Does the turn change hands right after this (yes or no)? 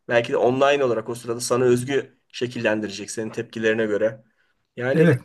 yes